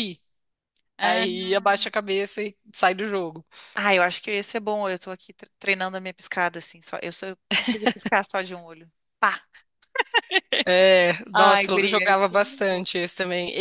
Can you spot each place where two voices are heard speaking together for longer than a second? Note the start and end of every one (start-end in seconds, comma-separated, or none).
11.3-12.8